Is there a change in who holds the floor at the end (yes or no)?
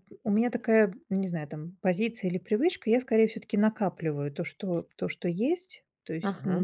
no